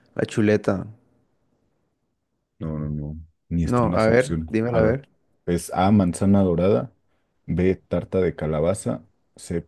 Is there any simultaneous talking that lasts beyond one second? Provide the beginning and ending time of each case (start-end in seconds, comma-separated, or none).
3.6-5.0